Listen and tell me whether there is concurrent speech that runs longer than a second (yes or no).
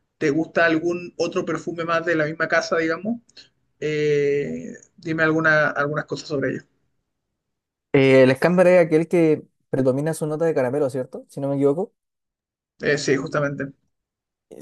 no